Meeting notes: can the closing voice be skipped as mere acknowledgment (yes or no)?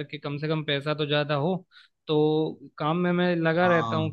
yes